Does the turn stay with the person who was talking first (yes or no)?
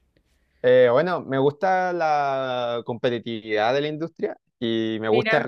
yes